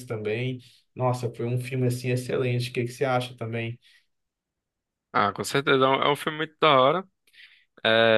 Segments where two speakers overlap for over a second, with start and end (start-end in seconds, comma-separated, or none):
none